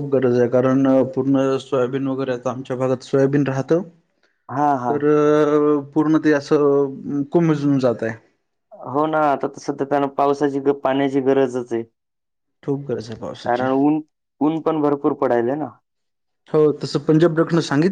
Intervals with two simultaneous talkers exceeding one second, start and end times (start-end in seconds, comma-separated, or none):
none